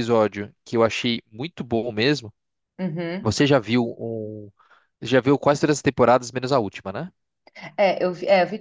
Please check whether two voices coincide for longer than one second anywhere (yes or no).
no